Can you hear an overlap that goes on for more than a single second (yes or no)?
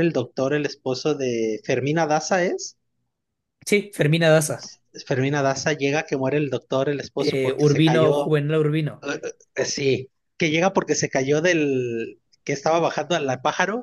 yes